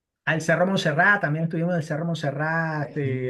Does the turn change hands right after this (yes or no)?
no